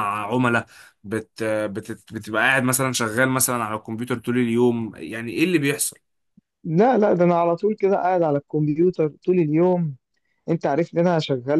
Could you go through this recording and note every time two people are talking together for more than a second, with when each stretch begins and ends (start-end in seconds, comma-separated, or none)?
none